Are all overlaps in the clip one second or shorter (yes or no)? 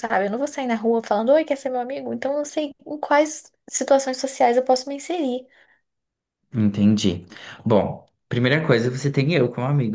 yes